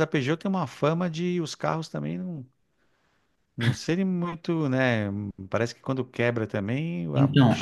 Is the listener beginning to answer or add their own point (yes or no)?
yes